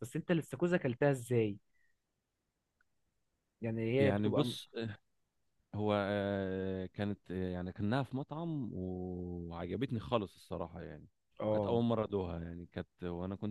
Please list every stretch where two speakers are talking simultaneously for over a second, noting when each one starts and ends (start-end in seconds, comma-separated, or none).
none